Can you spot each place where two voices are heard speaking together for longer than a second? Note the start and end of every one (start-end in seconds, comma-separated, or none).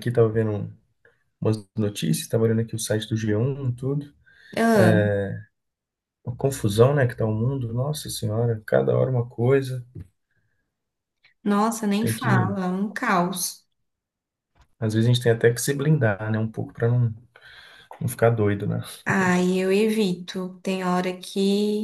none